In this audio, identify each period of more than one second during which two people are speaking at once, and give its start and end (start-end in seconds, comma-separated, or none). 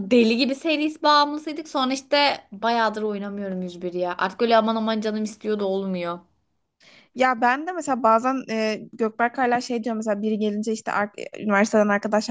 none